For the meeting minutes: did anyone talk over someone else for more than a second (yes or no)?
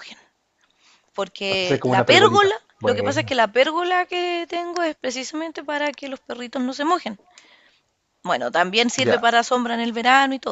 yes